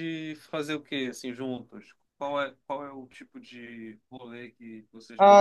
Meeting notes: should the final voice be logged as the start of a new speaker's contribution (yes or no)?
yes